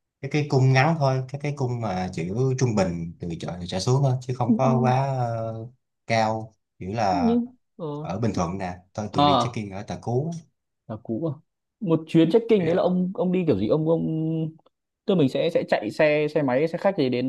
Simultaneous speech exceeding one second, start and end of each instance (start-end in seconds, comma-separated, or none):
none